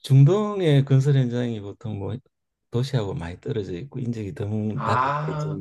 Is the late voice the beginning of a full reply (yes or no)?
no